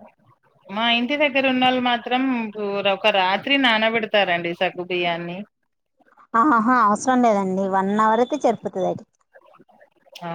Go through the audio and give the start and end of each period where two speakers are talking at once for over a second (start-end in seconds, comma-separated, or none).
none